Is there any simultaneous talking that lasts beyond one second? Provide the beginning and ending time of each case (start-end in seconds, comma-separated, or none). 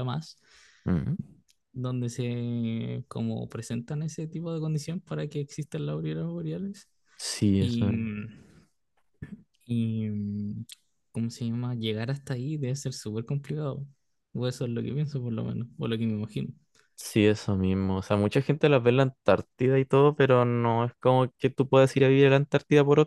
none